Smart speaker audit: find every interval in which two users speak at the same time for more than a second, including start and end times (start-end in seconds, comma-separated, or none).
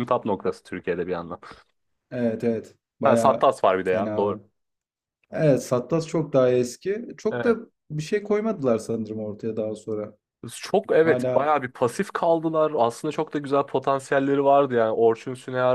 3.0-4.4